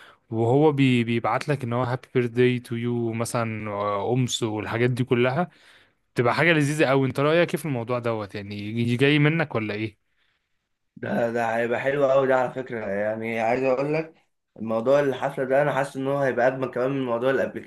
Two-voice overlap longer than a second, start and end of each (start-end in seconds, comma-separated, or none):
none